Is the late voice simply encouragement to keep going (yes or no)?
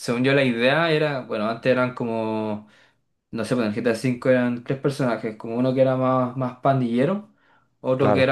yes